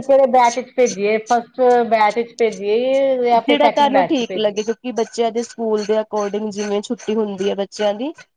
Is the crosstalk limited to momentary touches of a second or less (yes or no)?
yes